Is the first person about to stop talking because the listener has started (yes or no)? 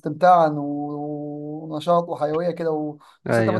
no